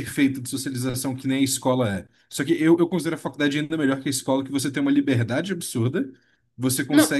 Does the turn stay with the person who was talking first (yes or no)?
yes